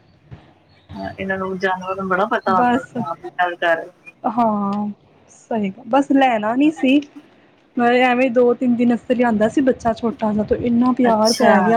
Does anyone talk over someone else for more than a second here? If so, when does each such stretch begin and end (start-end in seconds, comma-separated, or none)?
none